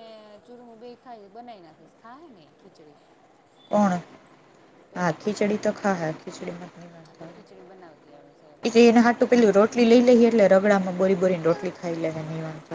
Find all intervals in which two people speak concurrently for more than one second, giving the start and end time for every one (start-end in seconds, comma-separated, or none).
7.1-8.6